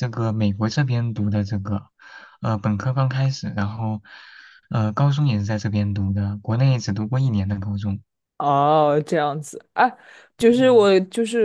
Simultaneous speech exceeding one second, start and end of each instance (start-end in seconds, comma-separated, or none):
none